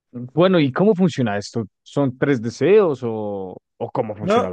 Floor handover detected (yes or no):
yes